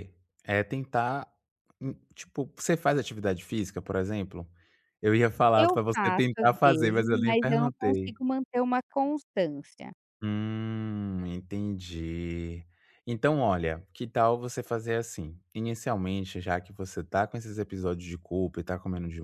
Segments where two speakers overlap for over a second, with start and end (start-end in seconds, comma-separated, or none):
5.5-8.2